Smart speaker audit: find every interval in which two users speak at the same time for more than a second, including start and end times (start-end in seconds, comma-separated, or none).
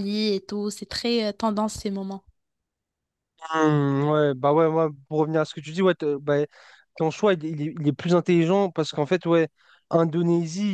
none